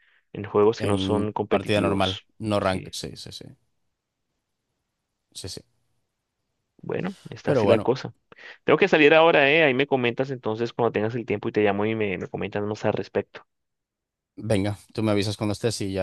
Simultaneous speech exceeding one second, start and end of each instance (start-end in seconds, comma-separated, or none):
0.8-2.9